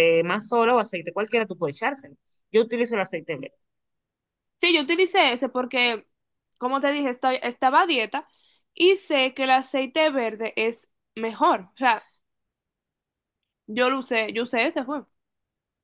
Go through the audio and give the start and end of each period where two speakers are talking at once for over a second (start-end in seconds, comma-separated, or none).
none